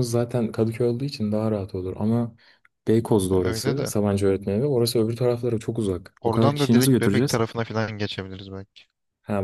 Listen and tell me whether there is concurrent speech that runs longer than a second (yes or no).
yes